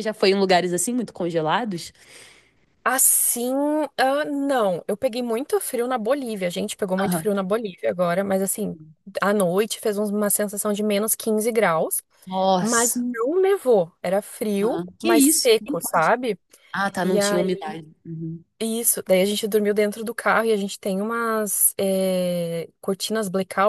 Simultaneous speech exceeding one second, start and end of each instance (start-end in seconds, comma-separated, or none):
14.6-16.1